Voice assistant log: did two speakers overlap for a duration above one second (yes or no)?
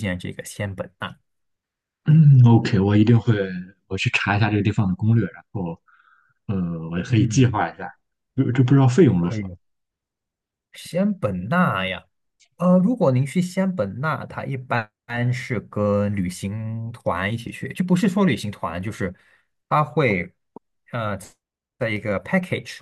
no